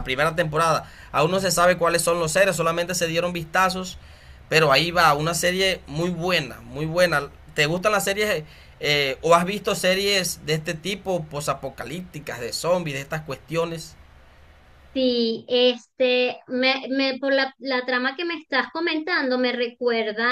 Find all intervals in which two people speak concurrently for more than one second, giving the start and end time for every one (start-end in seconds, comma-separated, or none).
none